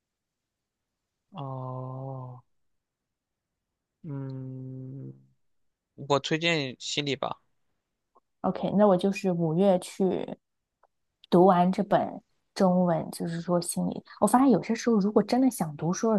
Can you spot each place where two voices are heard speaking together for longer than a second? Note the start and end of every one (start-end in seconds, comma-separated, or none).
none